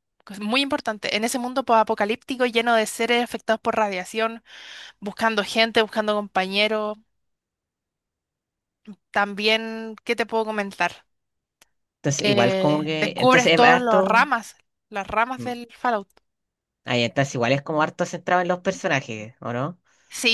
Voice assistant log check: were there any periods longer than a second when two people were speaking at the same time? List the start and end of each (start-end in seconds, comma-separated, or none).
12.2-14.3